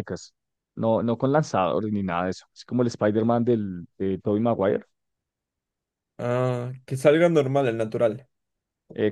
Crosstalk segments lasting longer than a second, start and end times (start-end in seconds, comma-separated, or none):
none